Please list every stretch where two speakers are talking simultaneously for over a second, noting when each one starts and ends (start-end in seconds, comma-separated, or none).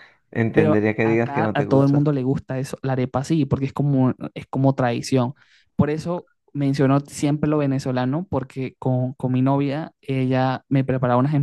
0.5-2.1